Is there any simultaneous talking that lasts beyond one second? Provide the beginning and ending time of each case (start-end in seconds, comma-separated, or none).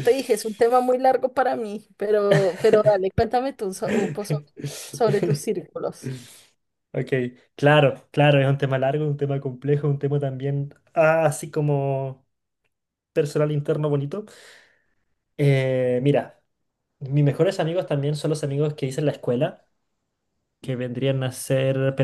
none